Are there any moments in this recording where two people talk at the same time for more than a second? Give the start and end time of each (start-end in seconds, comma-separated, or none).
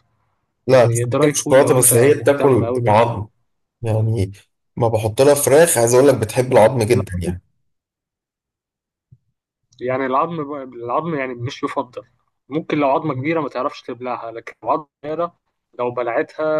0.7-2.9